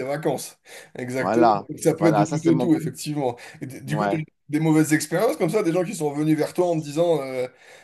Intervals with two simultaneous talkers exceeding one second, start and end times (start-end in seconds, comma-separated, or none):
1.2-2.7